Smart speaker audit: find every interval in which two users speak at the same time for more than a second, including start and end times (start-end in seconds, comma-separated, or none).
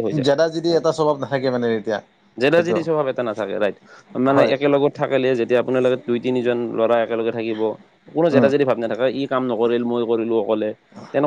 none